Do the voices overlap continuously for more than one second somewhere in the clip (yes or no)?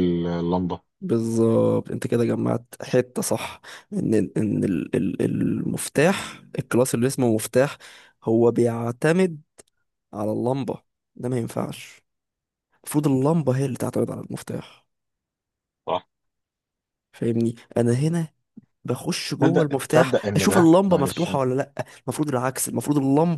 yes